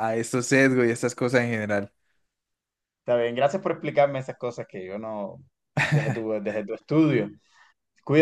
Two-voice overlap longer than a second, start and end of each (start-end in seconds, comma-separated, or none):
none